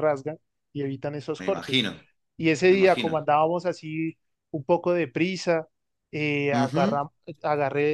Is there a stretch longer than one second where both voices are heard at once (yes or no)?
no